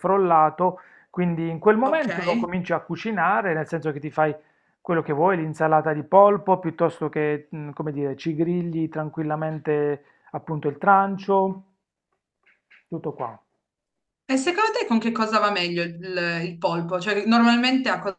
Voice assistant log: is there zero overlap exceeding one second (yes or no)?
yes